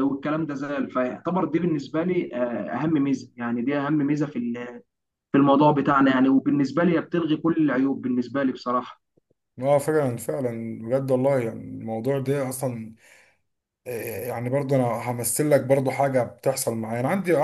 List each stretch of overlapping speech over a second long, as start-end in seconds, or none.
none